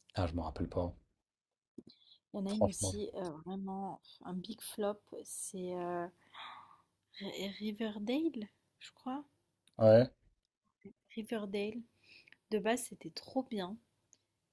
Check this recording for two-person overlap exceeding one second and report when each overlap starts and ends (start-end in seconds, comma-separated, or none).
none